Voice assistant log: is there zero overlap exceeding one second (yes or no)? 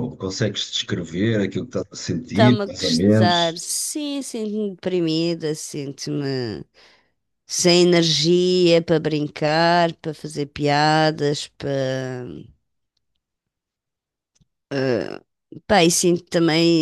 no